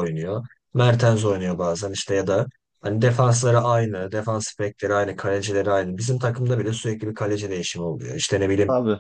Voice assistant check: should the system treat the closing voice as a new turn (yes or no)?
no